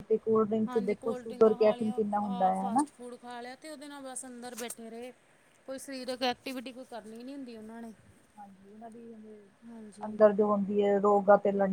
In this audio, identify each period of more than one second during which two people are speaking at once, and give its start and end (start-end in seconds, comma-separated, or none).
0.7-2.9